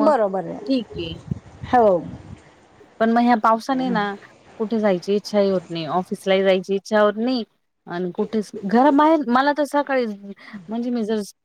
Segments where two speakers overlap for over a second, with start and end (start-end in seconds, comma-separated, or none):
none